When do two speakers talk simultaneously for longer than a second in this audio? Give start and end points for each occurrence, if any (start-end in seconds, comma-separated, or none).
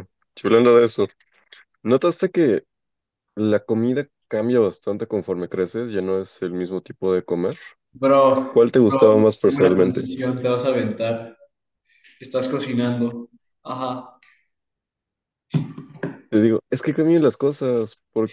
8.5-10.1